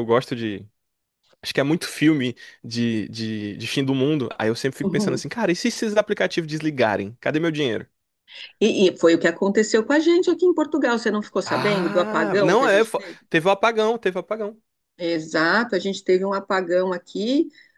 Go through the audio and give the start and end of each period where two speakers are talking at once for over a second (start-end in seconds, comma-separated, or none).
11.4-13.2